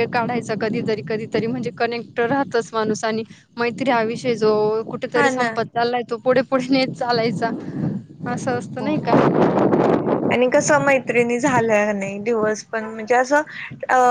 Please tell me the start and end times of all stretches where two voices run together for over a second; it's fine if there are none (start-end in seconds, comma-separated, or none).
none